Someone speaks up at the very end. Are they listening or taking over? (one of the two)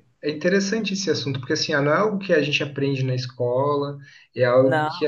listening